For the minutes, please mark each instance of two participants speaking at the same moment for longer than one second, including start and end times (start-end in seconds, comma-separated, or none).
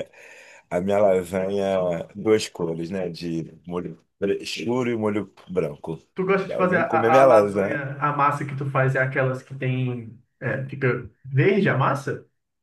6.5-7.8